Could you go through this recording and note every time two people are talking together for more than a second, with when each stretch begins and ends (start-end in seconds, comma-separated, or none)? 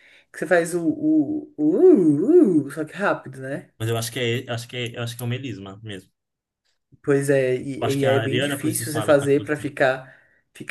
7.8-9.7